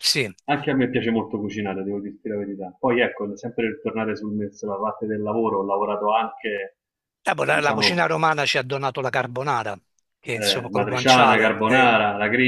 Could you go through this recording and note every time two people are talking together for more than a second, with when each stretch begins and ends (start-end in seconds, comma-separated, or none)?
10.3-11.9